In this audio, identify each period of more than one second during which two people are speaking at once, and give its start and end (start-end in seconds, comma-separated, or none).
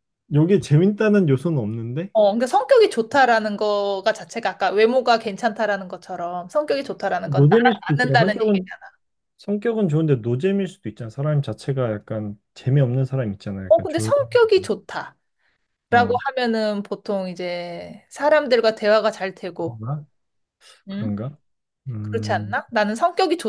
7.2-8.7